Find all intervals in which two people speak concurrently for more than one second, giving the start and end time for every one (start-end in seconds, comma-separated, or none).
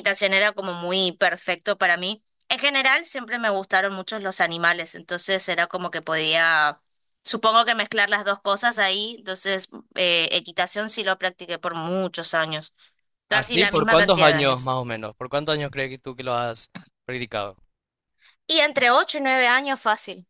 13.3-14.7